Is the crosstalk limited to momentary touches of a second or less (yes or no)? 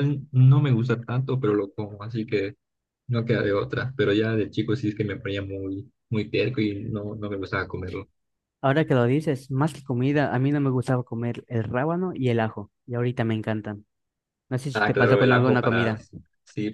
no